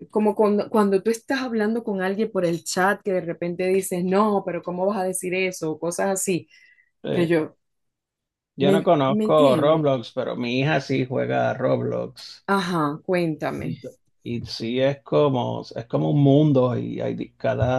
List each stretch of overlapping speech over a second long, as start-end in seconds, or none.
8.6-9.9